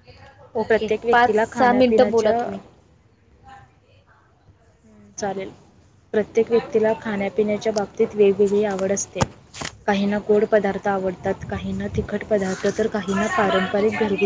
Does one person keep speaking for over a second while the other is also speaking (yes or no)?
yes